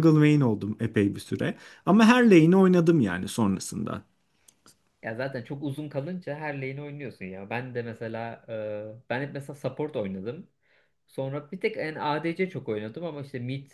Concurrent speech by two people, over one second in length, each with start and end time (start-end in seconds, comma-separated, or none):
none